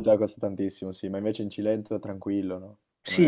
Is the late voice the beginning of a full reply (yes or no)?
yes